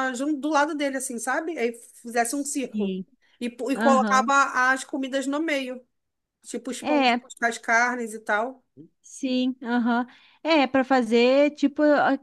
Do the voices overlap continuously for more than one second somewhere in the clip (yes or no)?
no